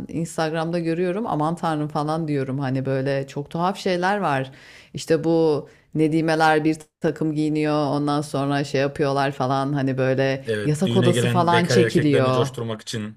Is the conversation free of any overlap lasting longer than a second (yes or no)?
no